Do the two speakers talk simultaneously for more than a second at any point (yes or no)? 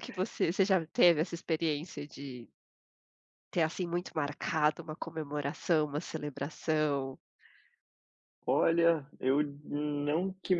no